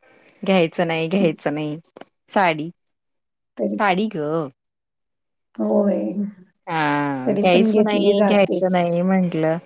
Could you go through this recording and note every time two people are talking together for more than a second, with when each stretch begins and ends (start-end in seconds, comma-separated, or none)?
7.2-8.8